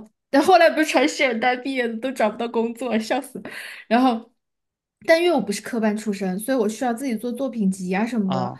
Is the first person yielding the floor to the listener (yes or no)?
no